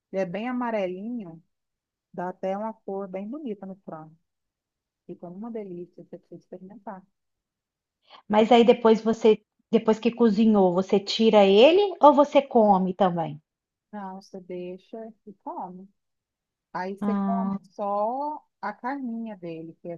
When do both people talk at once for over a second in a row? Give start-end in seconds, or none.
none